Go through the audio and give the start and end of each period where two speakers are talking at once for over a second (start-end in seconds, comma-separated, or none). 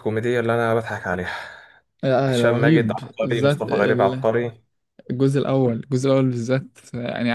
2.3-4.2